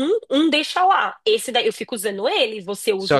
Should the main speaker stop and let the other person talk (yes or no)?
yes